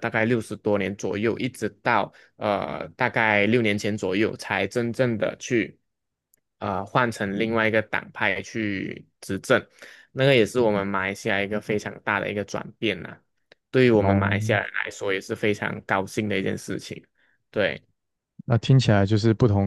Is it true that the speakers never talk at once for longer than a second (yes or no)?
yes